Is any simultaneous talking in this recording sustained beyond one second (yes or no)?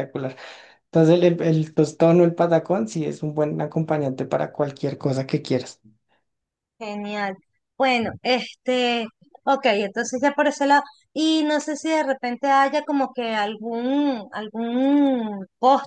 no